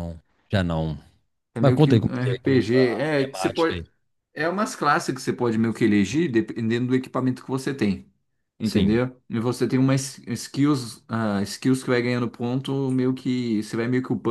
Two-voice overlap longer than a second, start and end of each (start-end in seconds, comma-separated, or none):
1.6-3.8